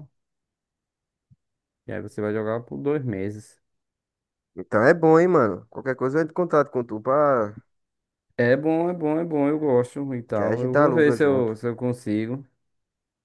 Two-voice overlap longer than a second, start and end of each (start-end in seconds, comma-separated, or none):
10.3-11.5